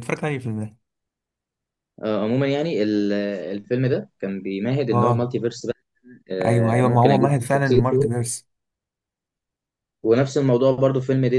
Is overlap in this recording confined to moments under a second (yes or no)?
no